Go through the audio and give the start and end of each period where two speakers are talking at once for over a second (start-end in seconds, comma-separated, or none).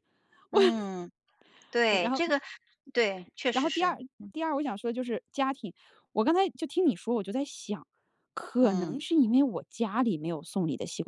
none